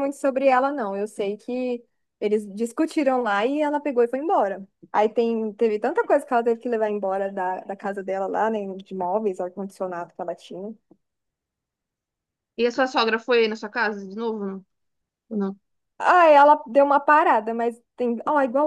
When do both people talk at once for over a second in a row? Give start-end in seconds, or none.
none